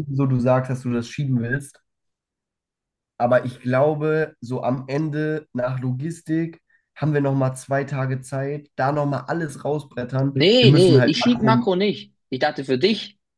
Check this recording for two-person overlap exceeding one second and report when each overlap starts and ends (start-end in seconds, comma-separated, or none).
10.3-11.7